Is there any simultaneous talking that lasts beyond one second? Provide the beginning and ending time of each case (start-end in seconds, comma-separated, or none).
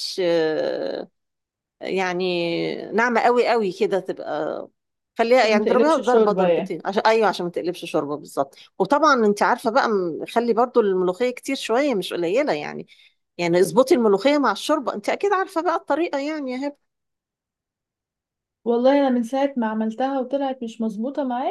5.4-6.8